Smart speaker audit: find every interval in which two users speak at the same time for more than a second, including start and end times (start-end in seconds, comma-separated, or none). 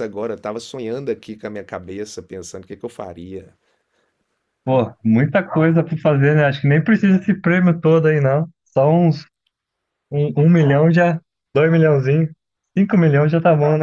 none